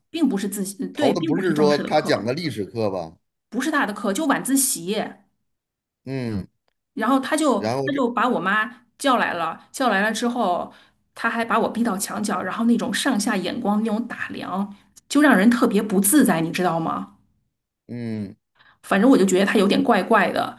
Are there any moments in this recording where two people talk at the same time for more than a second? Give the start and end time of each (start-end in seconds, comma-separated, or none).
0.9-2.3